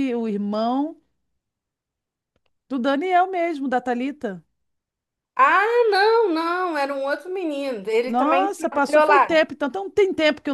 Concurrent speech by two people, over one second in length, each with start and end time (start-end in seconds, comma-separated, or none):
8.1-9.4